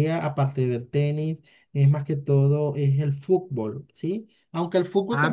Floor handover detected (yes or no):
no